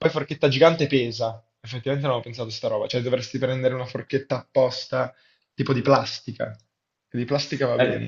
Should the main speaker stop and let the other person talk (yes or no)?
yes